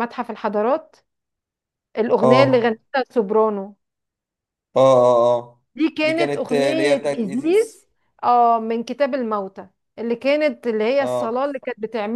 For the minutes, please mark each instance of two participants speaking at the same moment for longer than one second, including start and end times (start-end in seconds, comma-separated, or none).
6.0-7.8